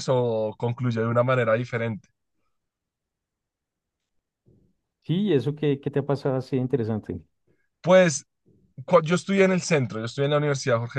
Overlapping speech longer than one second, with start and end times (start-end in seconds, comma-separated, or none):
none